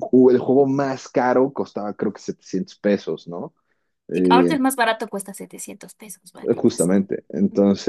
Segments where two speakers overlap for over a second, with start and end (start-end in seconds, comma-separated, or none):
none